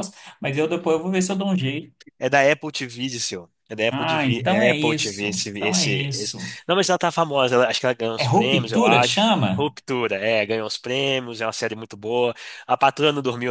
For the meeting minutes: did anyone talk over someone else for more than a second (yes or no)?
yes